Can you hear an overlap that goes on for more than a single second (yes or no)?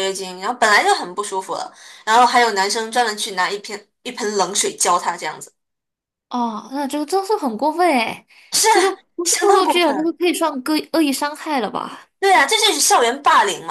yes